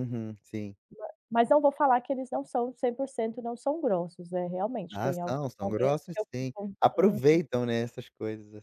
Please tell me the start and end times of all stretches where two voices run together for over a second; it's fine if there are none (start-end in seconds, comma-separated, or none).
4.9-7.2